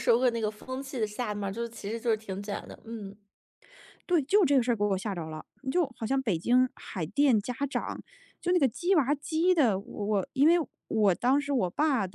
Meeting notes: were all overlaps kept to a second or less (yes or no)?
yes